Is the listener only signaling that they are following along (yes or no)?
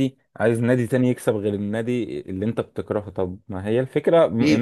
no